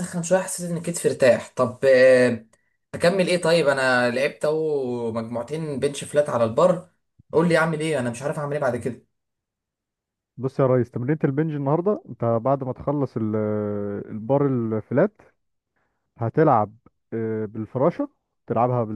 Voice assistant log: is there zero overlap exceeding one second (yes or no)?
yes